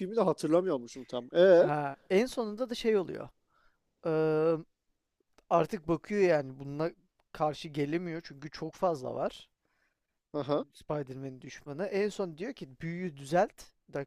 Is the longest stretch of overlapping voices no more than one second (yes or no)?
yes